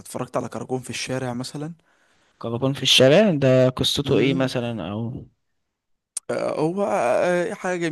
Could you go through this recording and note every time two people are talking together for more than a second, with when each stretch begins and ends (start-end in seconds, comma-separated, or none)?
none